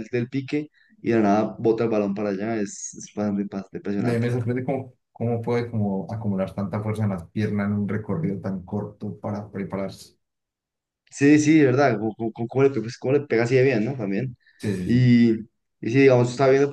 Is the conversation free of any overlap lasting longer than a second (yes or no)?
yes